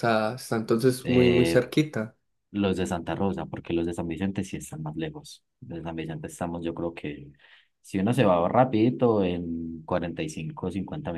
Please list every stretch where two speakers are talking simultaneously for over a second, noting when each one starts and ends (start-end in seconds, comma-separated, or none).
none